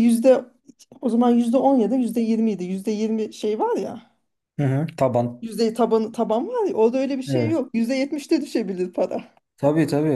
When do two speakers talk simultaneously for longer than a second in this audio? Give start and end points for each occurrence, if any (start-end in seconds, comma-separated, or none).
none